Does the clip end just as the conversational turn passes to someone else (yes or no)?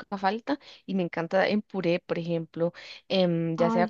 no